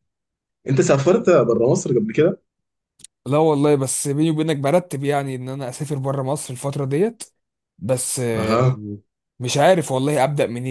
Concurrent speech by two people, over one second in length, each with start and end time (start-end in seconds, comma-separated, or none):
none